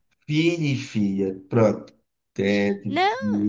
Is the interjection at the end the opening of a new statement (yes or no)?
no